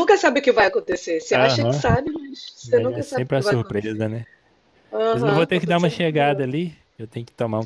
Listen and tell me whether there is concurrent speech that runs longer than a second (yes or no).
yes